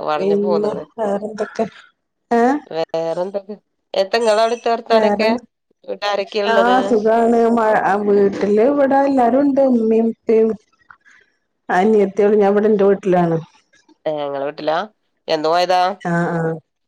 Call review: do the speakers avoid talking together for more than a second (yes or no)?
yes